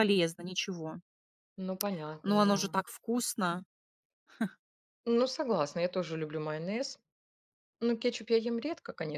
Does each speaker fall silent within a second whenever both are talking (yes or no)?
yes